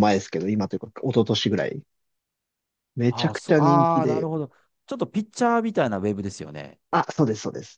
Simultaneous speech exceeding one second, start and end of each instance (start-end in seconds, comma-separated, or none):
3.1-4.3